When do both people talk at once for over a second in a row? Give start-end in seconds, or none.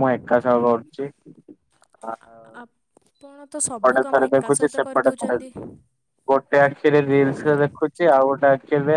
3.8-5.4